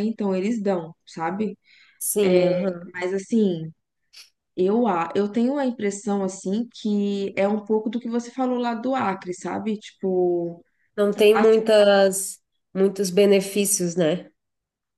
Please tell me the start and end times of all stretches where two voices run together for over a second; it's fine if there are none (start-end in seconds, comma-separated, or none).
none